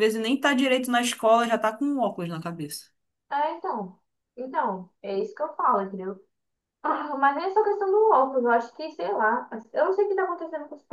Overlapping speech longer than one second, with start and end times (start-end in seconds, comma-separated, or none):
none